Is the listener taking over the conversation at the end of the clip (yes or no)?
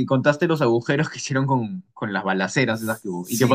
yes